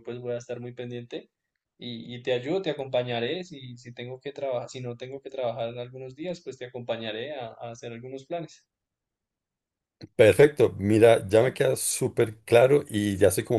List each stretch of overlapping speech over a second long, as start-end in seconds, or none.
none